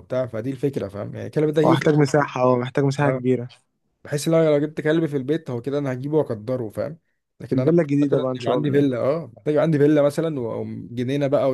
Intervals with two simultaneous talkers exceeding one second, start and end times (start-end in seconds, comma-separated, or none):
7.5-8.9